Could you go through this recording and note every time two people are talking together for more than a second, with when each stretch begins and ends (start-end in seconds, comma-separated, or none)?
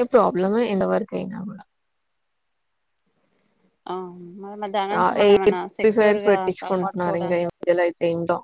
5.3-7.6